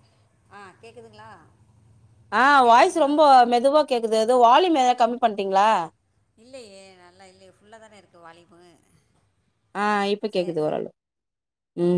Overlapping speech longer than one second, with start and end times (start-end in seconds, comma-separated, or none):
none